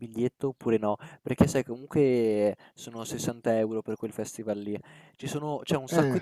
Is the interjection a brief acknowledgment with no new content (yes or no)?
yes